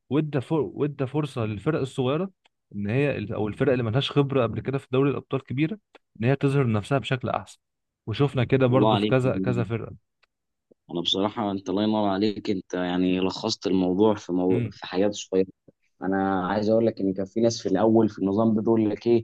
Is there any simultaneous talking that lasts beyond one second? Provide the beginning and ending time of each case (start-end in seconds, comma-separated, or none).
none